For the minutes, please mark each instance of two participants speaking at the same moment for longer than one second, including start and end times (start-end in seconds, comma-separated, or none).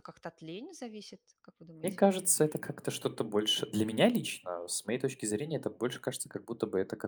none